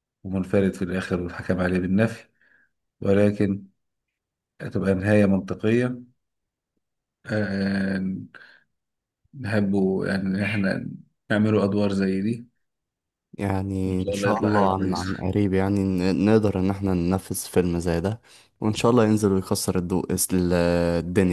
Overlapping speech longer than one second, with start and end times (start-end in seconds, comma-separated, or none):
13.8-15.3